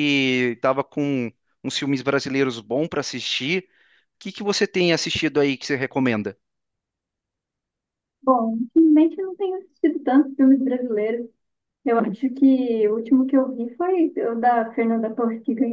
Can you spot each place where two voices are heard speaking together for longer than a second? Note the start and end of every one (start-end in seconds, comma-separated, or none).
none